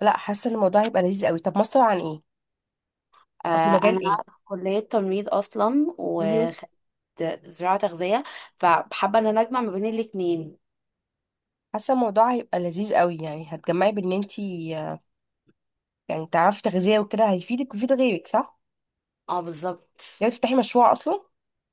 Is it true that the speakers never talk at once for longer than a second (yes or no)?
yes